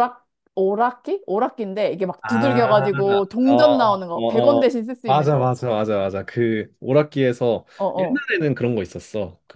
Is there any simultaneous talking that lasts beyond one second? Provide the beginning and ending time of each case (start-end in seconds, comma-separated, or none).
3.5-5.5